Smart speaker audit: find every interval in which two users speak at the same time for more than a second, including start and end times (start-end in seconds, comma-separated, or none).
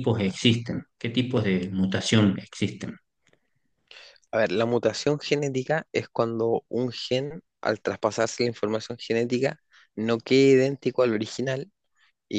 none